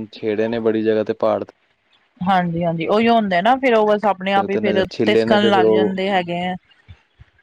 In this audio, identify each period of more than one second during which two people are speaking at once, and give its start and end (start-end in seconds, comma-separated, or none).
4.3-6.0